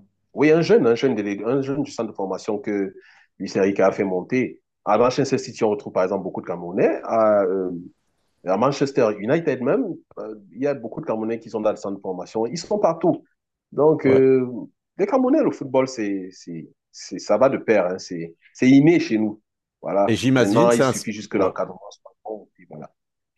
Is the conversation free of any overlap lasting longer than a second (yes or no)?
no